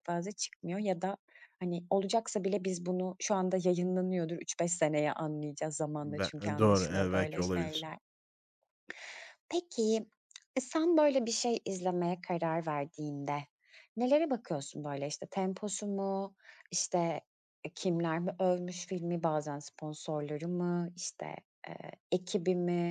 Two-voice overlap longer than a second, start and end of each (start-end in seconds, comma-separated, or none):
6.2-7.9